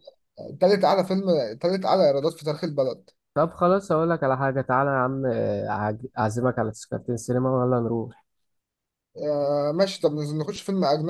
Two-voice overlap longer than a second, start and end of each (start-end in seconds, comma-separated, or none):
none